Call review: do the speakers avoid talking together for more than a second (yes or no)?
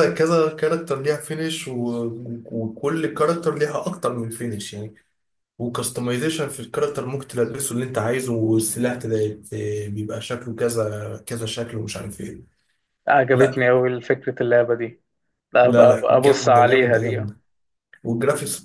no